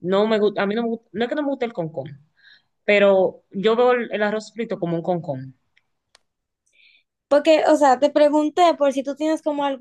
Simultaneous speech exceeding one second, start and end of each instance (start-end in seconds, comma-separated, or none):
none